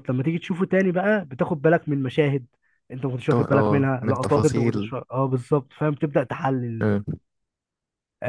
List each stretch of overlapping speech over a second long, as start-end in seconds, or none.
3.3-4.9